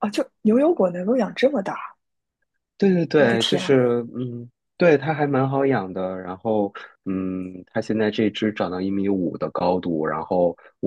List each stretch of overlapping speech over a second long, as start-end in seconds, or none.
none